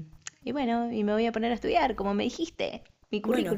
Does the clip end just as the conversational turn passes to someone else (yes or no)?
yes